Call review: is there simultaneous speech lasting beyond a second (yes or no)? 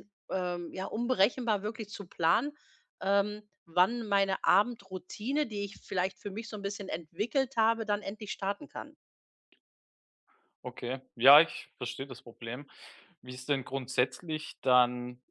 no